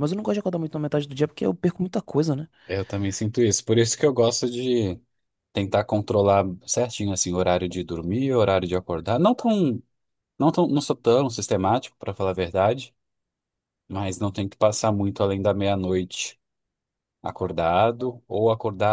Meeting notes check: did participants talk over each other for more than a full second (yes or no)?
no